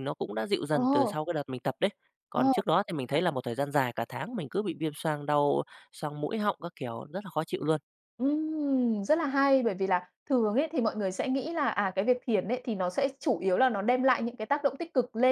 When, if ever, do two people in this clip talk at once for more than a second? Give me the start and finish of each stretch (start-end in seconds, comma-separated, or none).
none